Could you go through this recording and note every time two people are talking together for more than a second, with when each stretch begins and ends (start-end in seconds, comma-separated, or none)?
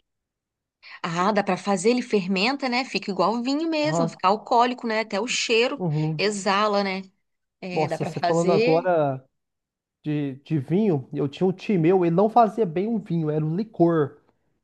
7.7-8.9